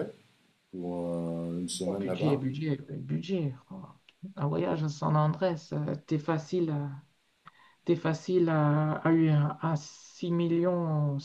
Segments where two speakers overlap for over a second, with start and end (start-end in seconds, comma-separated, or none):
none